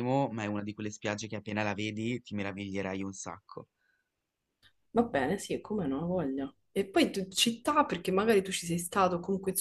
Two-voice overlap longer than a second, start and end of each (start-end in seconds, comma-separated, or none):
none